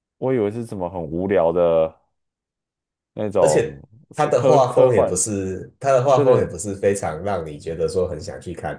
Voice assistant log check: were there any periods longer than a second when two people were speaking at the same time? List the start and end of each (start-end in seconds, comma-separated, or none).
3.4-5.2